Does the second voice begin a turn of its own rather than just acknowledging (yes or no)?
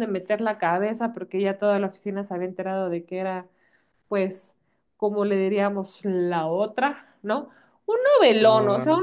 no